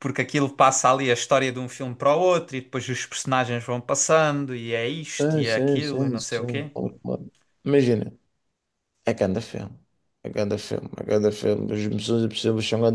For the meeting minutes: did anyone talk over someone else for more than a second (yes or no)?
yes